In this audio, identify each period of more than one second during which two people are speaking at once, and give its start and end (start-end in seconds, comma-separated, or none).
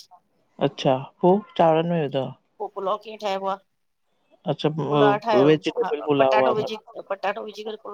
4.9-6.8